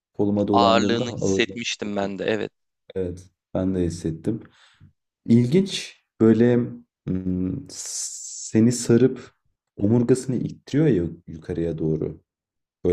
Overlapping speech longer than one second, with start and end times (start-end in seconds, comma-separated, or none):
0.5-2.1